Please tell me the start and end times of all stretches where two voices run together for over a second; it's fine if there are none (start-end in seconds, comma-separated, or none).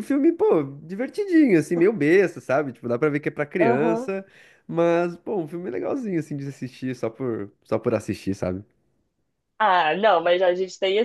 none